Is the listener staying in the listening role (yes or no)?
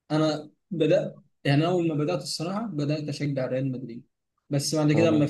yes